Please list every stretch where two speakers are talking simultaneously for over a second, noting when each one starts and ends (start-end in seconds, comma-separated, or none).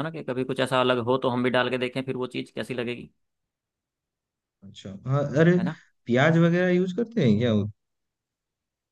none